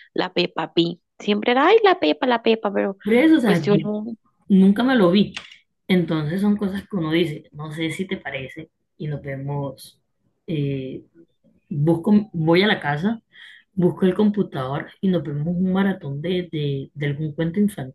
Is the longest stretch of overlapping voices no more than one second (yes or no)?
yes